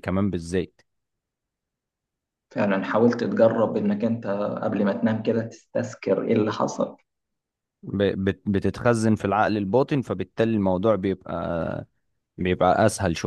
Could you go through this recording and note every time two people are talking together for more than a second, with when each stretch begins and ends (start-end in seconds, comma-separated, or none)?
none